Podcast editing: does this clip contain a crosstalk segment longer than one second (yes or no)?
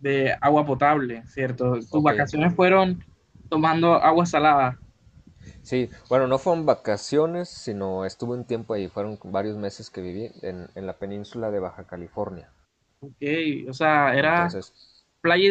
no